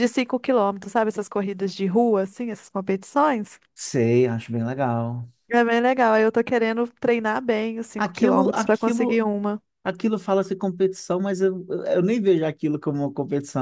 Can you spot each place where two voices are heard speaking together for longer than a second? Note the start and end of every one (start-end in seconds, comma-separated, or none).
8.0-9.2